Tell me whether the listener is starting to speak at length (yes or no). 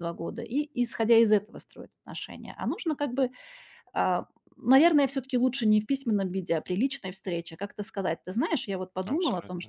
no